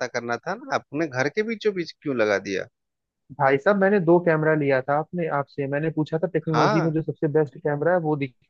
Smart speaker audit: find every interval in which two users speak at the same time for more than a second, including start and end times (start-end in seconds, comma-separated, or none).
none